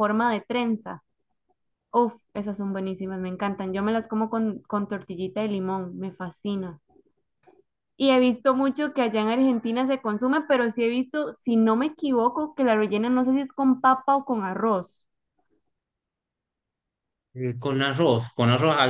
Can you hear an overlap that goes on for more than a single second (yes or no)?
no